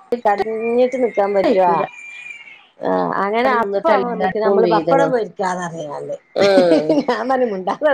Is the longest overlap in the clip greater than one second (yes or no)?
yes